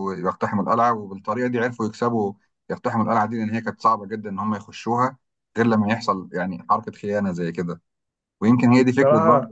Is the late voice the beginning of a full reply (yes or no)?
yes